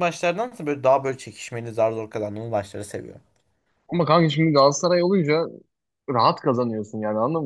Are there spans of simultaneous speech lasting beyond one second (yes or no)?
no